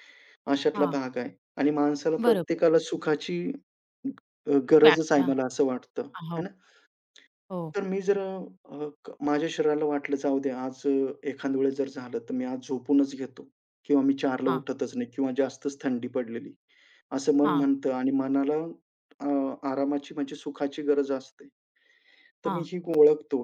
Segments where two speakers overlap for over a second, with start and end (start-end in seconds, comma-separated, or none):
none